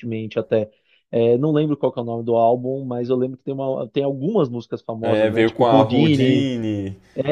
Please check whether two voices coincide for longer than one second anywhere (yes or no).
yes